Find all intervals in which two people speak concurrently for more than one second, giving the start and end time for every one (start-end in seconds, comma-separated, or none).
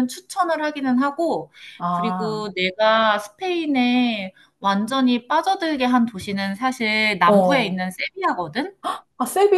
none